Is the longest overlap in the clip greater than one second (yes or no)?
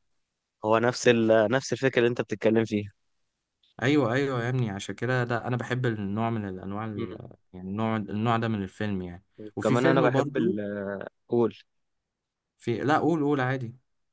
yes